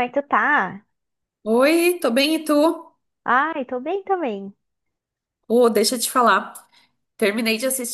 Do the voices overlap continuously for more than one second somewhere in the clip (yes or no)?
no